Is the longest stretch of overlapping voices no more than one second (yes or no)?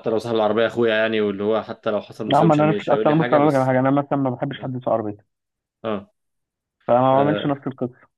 no